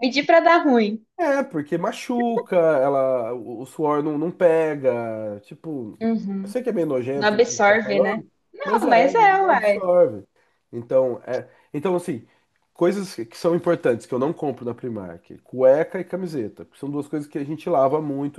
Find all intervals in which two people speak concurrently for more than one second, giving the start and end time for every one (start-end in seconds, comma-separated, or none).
7.2-9.8